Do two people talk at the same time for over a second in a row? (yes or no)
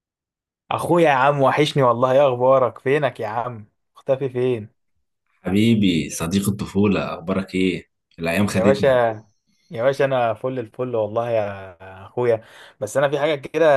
no